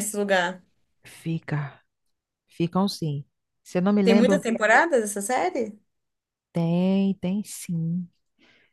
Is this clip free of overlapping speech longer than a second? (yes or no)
yes